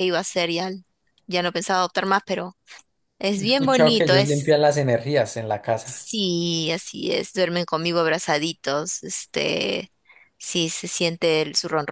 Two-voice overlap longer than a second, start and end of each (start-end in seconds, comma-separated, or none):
3.4-4.6